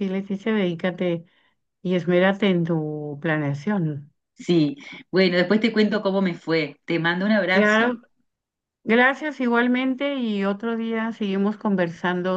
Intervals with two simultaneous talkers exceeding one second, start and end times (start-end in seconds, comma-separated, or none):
none